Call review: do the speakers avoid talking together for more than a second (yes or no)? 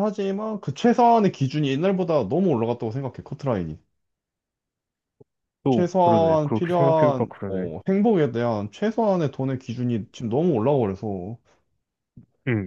no